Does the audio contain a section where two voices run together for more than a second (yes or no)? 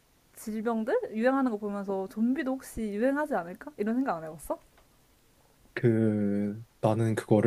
no